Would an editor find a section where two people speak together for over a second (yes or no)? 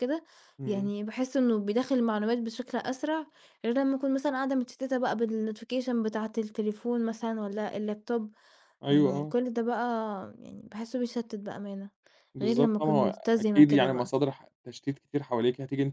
yes